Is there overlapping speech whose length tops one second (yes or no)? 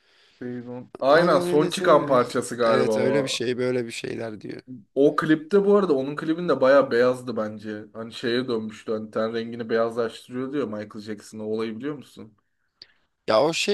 yes